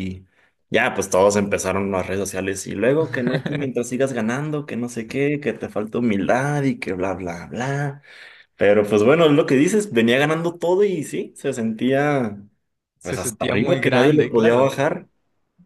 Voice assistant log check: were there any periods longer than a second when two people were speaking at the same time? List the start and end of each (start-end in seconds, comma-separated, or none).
13.0-14.7